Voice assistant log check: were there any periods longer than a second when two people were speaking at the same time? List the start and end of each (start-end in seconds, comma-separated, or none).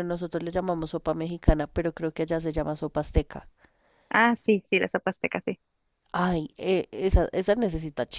none